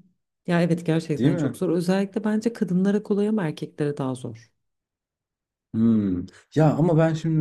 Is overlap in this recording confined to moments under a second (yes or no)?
yes